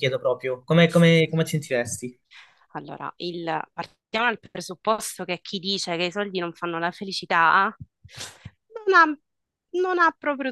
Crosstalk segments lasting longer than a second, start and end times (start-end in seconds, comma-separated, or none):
none